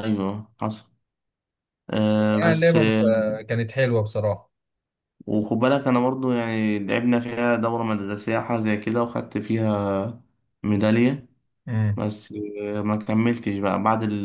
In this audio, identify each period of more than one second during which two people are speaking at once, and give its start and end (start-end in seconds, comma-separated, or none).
none